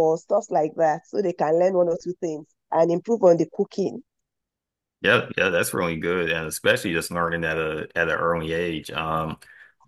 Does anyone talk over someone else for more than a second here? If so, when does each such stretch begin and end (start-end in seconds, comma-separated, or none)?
none